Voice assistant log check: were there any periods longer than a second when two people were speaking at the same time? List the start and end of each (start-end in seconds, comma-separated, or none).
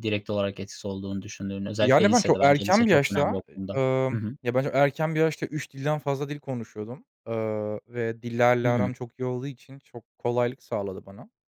1.8-3.4